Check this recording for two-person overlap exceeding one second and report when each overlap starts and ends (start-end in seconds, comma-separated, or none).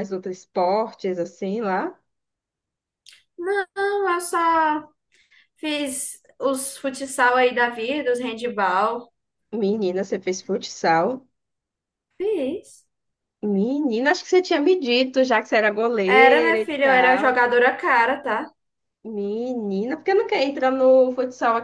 16.1-17.4